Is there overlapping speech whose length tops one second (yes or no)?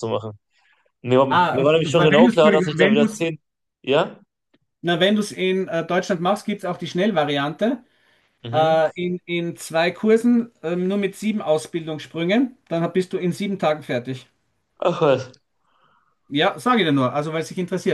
yes